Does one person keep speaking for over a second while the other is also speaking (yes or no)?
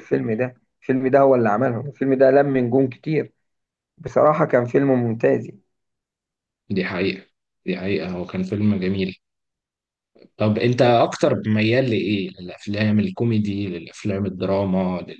no